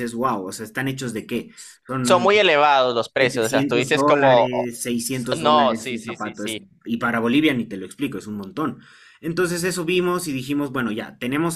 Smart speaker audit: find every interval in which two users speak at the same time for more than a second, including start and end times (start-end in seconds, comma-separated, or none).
3.2-4.7, 5.4-6.6